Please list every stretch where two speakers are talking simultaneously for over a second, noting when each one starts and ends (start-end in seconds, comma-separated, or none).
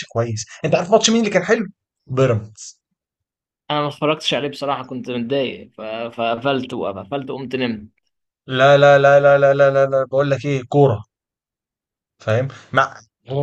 none